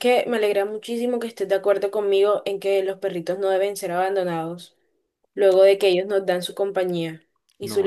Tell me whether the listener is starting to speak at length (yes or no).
yes